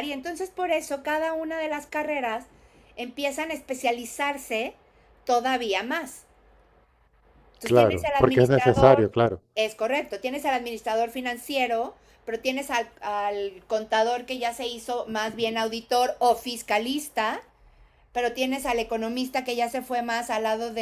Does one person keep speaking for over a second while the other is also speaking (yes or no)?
yes